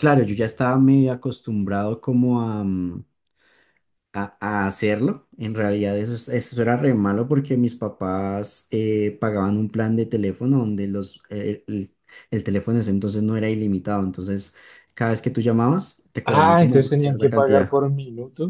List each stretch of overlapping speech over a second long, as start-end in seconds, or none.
16.2-17.7